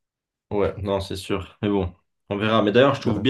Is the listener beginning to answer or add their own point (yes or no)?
no